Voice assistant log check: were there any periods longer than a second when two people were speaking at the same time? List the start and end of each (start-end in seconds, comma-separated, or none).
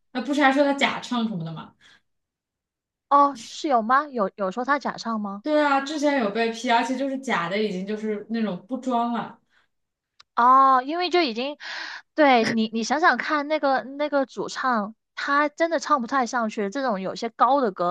none